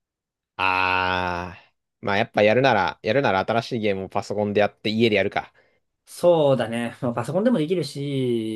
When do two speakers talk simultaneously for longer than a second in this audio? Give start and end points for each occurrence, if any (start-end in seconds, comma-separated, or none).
none